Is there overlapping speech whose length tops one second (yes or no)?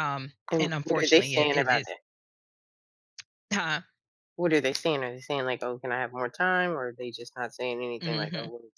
yes